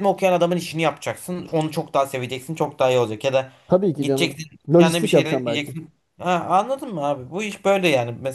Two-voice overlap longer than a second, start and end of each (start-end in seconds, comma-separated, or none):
4.0-5.8